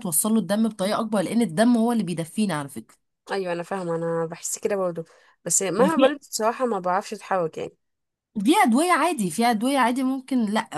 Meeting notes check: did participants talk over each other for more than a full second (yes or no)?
no